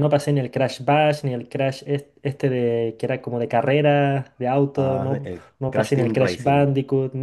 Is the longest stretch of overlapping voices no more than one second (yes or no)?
no